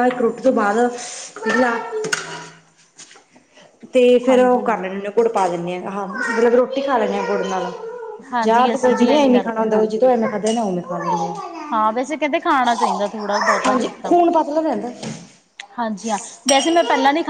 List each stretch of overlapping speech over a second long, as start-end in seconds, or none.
8.4-9.7